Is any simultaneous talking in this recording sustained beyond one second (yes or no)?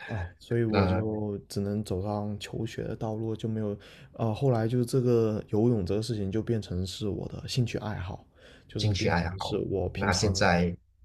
yes